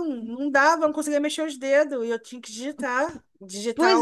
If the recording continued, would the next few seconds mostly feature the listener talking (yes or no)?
no